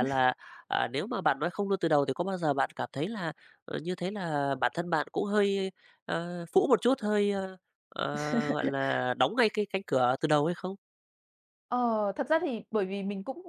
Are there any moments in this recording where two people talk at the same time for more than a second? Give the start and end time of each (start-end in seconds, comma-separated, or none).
none